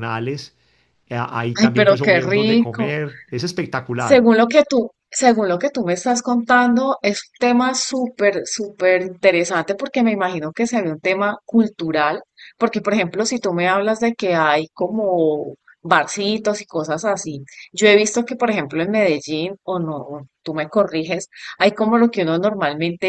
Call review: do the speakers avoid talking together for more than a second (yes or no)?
no